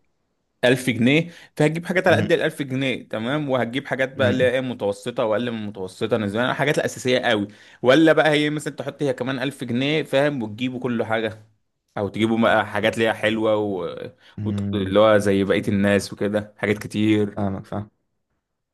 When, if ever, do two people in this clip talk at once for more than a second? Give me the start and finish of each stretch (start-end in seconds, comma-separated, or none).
none